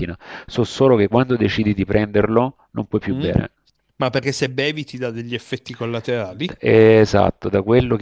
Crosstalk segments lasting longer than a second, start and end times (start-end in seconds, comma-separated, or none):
none